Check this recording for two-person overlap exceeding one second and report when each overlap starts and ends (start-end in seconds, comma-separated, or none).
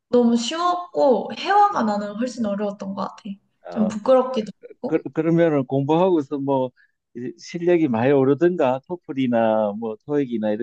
none